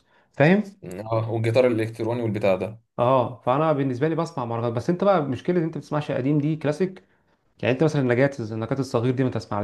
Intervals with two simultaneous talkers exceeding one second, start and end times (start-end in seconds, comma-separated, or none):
none